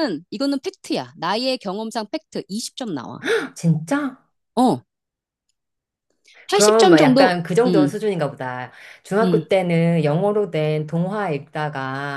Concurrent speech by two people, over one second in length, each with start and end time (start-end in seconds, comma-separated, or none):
6.5-8.0